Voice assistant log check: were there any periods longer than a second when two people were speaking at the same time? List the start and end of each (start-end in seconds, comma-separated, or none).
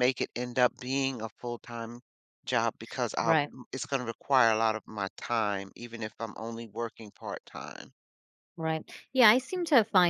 none